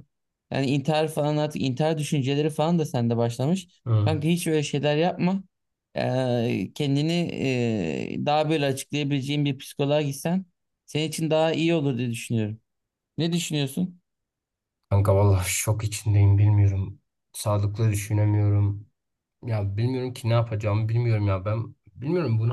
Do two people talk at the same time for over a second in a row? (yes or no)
no